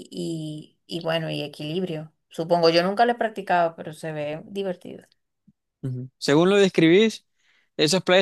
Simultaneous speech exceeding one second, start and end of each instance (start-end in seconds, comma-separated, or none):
none